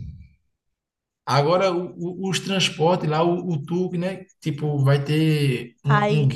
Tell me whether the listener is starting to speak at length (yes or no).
yes